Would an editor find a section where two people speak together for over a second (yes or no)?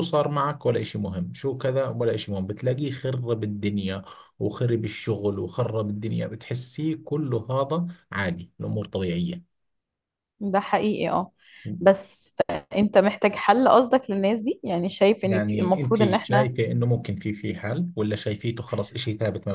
yes